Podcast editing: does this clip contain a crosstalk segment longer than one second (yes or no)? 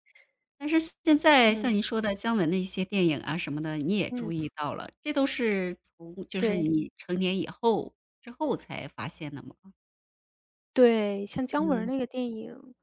no